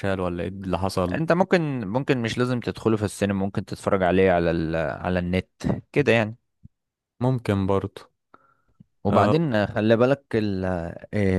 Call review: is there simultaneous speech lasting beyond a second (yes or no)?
no